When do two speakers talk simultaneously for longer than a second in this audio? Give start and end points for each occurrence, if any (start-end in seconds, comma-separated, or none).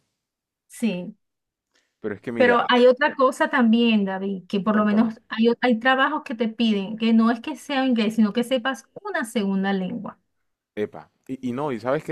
none